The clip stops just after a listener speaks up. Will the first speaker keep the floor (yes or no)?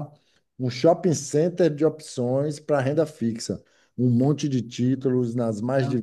yes